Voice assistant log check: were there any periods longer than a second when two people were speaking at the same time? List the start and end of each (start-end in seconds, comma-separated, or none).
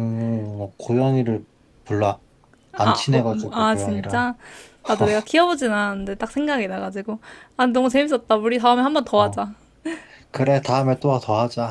2.8-4.3